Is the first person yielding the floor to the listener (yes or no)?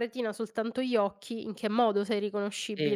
yes